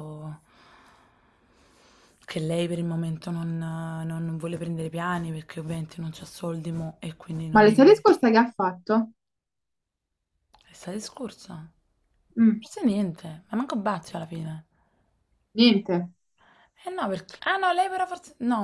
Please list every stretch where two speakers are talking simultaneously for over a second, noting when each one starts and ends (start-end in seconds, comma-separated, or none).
none